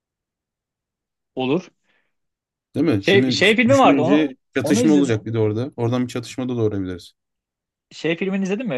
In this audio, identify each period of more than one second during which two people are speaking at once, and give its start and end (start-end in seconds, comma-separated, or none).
3.0-5.2